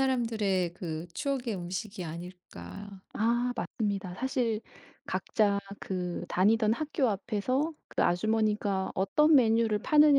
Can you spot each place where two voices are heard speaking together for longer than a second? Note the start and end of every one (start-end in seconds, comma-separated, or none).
none